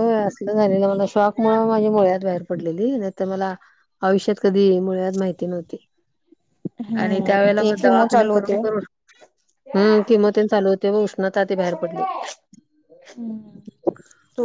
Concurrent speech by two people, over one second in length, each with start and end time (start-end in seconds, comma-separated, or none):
7.0-8.6